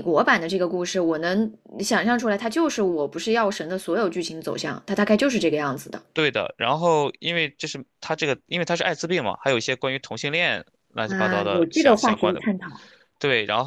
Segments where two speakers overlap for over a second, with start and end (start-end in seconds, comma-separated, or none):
11.1-12.4